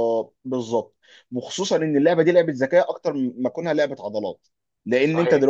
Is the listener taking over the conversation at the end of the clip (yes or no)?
no